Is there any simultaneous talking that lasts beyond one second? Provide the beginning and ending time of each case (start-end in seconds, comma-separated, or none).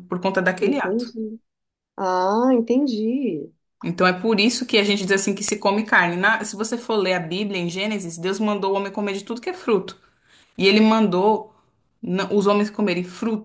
none